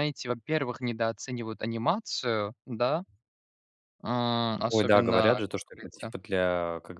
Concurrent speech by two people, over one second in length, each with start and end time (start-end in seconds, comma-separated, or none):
4.7-6.1